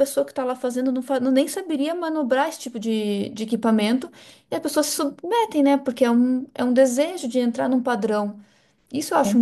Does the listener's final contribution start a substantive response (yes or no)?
yes